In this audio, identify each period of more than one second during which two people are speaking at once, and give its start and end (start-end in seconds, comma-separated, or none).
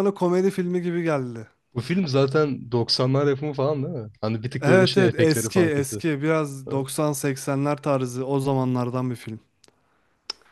4.6-6.0